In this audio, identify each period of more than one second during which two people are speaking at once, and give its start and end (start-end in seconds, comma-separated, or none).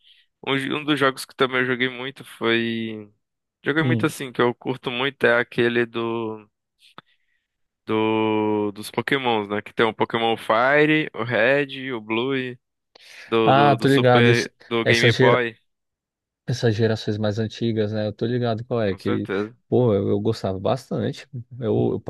13.4-15.4